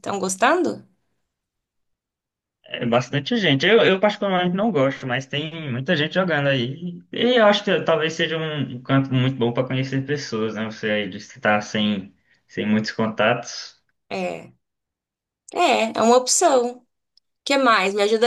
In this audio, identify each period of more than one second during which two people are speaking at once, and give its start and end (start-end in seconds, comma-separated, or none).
none